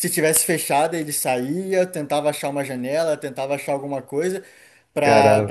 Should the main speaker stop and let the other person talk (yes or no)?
no